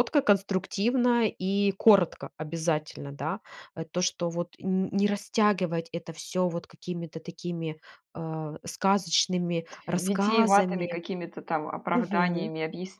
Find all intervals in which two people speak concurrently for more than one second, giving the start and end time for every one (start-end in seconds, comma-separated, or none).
9.7-11.0